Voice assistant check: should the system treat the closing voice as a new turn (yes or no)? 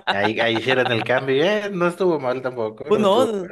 yes